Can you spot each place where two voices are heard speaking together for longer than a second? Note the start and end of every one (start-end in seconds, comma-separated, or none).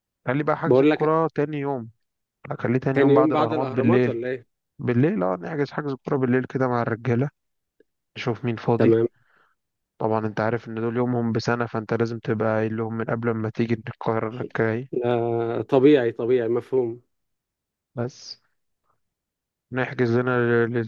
2.9-4.2